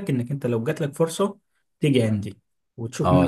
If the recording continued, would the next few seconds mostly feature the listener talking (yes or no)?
yes